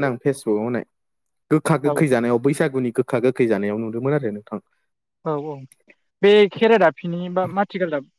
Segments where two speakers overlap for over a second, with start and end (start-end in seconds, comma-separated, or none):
none